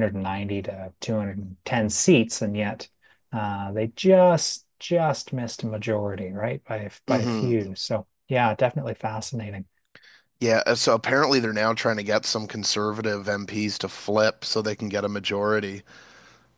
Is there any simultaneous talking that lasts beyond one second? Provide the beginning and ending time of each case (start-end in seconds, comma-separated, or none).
none